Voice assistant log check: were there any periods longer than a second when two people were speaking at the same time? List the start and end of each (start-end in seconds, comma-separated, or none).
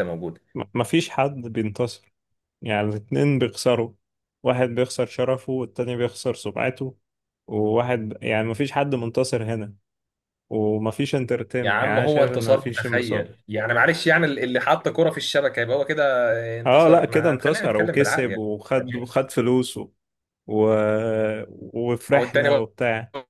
11.6-13.3, 16.6-18.4